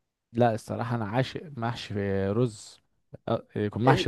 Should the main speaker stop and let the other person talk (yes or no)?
no